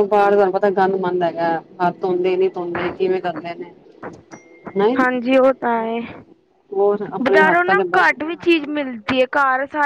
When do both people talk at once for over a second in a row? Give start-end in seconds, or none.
none